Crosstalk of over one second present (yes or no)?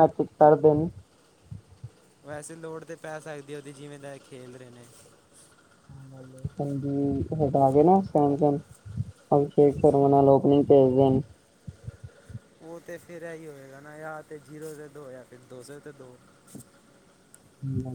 no